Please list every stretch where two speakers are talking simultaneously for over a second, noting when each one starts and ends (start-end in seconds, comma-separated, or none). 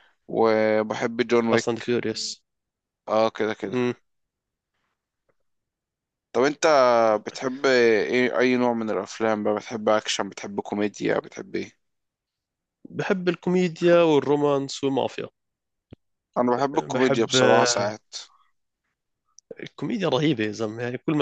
16.7-17.9